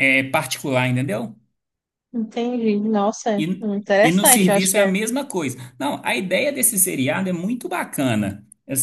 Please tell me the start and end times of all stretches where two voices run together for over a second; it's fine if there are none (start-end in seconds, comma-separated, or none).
3.4-4.9